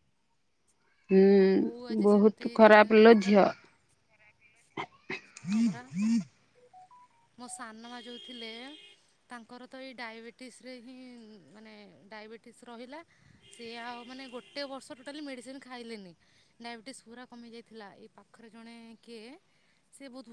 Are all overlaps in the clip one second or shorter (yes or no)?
no